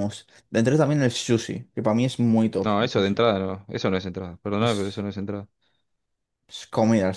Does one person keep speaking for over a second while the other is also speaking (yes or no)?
no